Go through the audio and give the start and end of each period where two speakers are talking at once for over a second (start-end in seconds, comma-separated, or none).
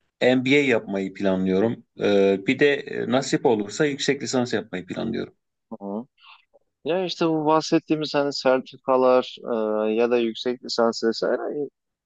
none